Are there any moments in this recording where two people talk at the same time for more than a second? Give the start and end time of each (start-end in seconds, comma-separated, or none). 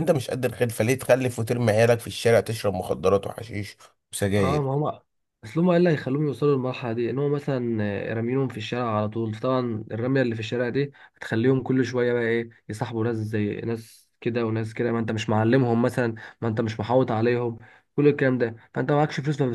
none